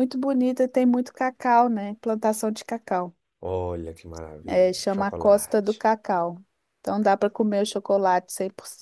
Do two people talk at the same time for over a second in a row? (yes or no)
yes